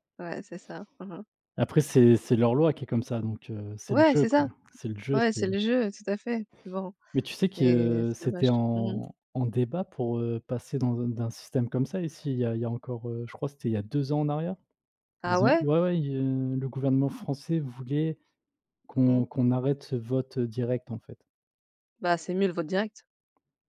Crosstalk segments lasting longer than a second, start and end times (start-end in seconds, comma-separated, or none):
7.5-9.0